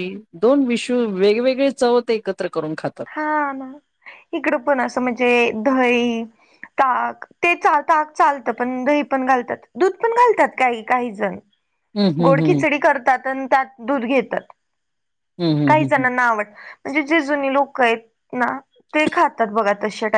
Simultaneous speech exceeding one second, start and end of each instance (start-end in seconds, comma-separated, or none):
none